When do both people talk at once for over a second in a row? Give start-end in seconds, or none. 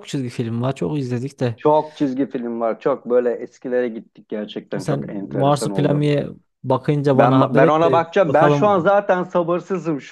4.8-6.1, 7.1-8.9